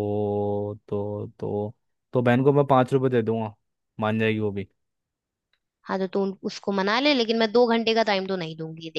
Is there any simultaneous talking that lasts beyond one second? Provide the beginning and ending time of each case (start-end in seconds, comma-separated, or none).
none